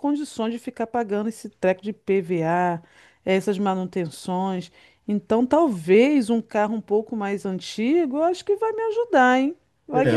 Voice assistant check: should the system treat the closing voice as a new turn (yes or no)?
yes